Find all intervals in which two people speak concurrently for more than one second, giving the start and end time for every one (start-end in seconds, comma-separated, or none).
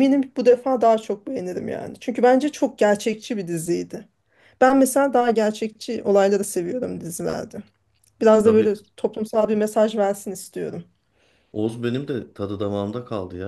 none